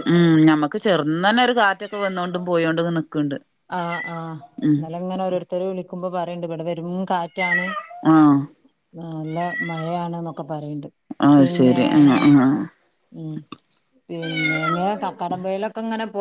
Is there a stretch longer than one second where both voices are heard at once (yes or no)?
no